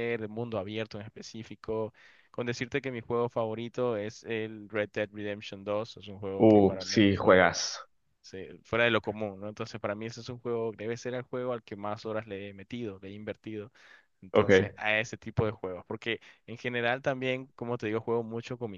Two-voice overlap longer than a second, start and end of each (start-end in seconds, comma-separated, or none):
6.4-7.6